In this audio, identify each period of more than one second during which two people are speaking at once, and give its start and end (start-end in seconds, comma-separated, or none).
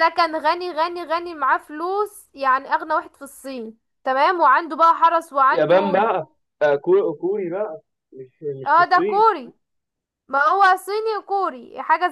none